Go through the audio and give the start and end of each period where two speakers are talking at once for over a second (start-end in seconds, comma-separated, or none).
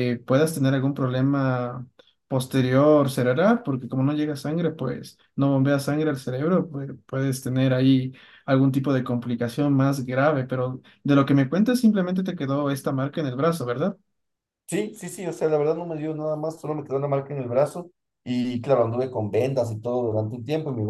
none